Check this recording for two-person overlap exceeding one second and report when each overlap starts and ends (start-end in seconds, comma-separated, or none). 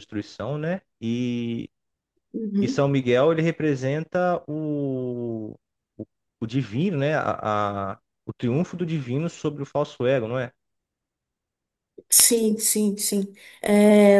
none